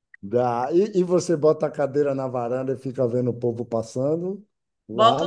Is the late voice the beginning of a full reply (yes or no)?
yes